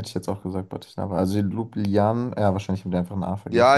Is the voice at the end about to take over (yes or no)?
yes